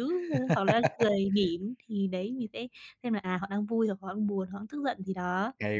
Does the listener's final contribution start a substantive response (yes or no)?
yes